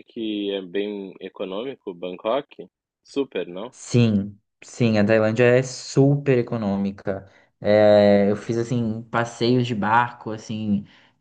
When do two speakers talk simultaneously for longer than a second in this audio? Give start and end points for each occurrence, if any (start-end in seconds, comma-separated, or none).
none